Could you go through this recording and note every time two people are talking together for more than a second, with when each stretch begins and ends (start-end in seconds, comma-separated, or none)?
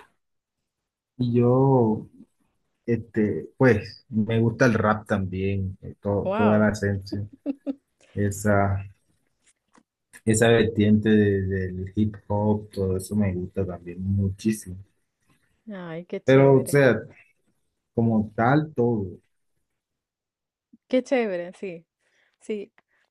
none